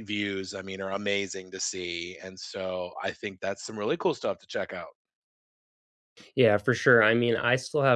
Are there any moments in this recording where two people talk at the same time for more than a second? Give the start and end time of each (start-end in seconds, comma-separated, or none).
none